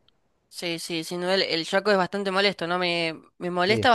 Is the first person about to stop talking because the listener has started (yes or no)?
no